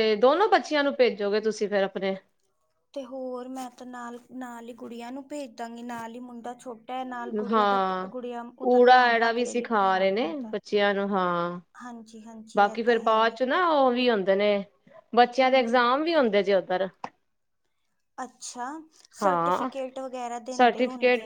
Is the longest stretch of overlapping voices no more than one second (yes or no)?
no